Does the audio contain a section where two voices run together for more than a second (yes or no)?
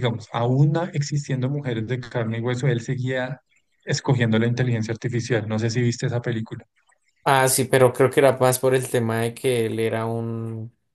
no